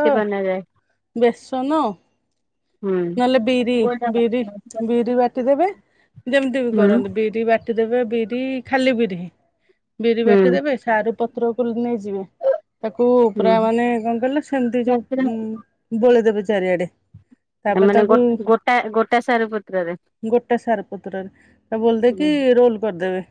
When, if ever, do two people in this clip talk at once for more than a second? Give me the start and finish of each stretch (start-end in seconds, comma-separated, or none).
none